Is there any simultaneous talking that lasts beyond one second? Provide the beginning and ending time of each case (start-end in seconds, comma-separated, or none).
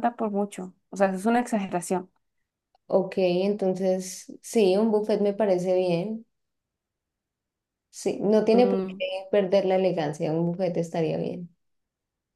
none